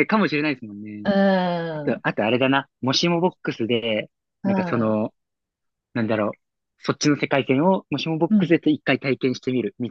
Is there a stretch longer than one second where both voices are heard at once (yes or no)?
no